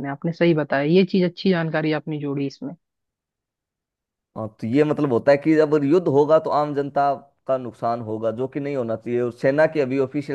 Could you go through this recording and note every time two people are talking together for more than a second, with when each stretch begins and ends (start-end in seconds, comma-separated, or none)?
none